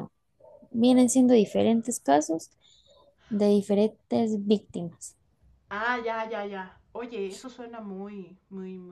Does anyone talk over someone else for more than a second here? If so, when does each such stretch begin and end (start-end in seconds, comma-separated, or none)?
none